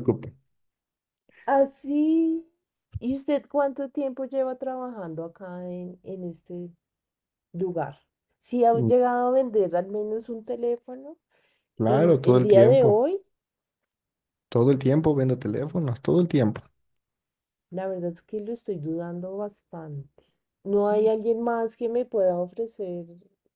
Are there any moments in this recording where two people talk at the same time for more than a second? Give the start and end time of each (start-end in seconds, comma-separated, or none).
11.8-13.0